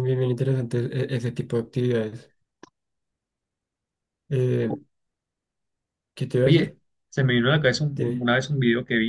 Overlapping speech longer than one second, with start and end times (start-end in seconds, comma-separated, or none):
none